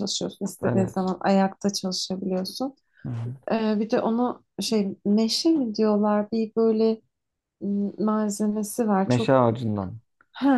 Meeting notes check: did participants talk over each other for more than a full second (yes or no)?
no